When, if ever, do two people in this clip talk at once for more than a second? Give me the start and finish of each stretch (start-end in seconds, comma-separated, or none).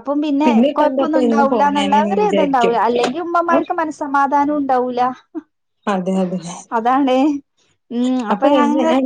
0.7-2.8